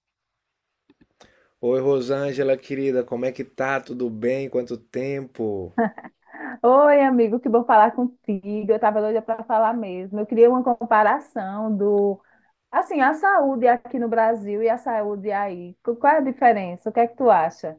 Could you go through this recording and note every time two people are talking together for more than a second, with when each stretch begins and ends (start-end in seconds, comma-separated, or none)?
none